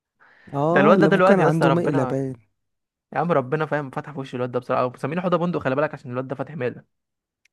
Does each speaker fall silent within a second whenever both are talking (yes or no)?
no